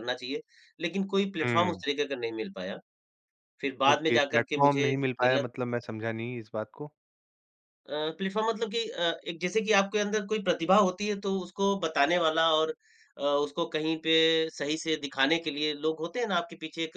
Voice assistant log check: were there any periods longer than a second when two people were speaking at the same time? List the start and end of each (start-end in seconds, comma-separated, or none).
3.9-5.4